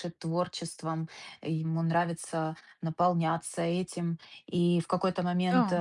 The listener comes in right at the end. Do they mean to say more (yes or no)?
no